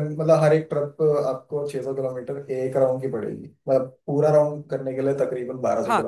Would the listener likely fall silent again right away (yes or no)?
no